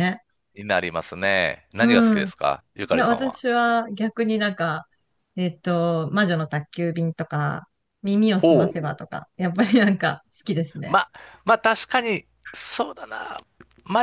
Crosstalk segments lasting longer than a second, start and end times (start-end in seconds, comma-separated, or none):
none